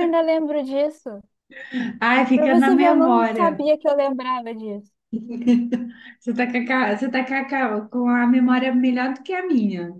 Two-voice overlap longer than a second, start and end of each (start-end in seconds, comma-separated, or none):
2.3-3.6